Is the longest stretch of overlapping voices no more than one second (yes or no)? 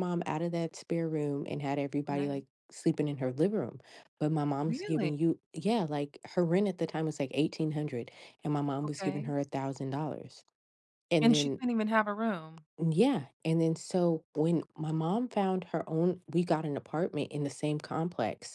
yes